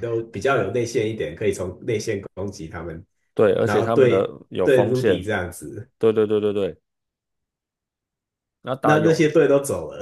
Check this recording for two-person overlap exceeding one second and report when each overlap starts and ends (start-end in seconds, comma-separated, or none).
3.6-5.3